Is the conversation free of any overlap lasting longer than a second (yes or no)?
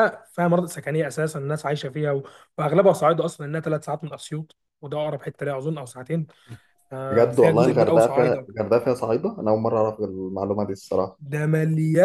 no